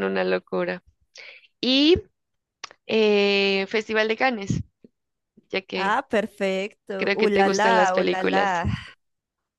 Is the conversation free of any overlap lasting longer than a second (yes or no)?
no